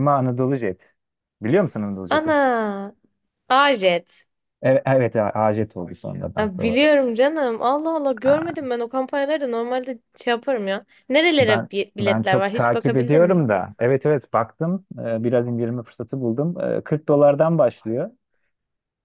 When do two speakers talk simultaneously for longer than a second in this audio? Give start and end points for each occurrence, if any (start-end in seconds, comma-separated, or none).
11.4-13.4